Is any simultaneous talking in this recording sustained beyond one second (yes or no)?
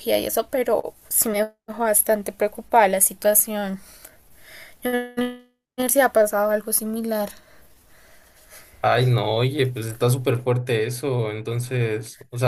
no